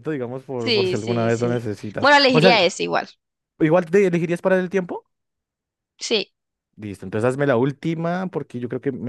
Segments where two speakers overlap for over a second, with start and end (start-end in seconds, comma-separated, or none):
0.6-2.7